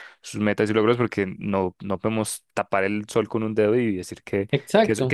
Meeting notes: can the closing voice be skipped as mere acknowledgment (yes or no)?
yes